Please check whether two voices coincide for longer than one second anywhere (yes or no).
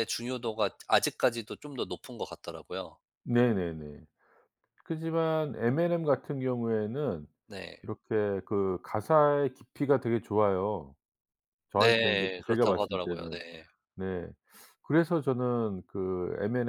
yes